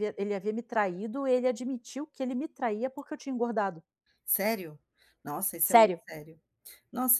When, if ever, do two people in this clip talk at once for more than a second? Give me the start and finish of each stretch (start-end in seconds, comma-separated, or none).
none